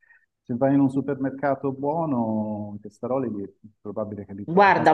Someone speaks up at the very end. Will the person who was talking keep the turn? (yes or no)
no